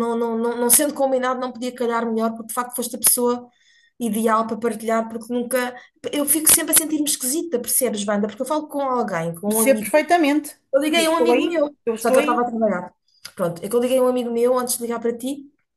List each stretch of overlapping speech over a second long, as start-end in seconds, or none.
10.9-12.5